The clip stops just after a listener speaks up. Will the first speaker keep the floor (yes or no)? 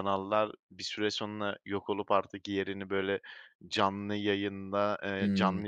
yes